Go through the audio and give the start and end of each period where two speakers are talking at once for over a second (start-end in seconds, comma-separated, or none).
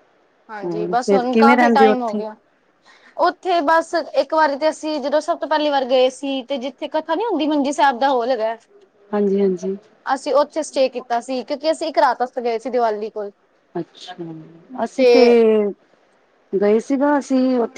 0.6-2.2